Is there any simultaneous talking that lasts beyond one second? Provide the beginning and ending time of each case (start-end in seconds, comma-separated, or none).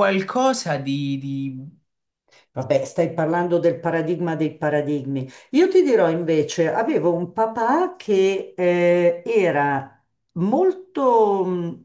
none